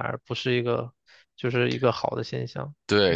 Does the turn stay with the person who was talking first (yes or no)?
no